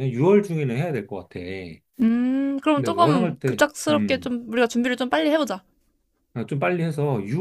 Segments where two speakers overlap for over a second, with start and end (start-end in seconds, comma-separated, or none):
2.8-4.3